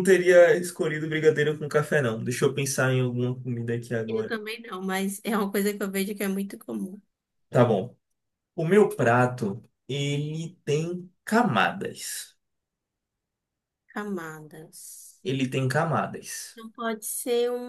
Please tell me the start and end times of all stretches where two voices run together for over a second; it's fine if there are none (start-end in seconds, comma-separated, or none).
none